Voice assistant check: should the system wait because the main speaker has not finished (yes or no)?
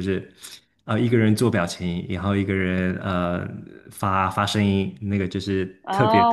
no